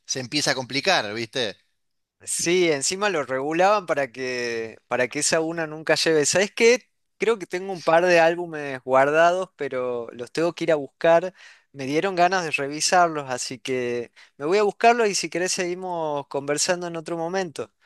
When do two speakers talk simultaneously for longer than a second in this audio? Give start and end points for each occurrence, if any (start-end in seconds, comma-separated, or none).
none